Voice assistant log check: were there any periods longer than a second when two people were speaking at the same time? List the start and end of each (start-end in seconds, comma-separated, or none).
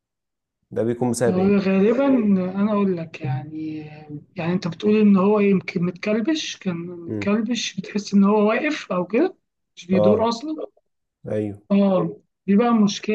none